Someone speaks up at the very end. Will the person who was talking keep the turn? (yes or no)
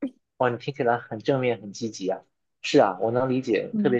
yes